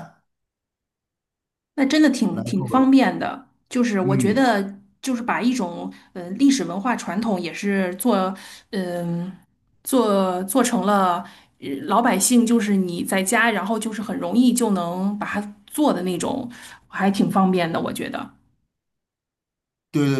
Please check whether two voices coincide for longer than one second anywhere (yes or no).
no